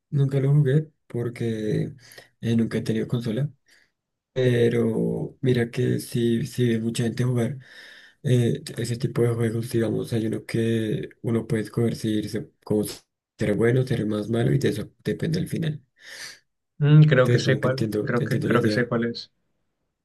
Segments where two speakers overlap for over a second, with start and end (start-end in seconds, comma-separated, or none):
17.2-19.0